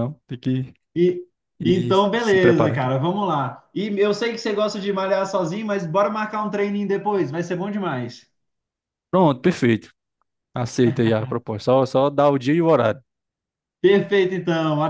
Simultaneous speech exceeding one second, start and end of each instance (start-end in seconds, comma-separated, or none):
1.6-2.9